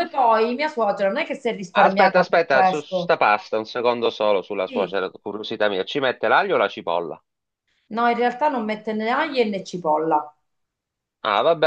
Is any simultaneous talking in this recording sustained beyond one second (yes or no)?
yes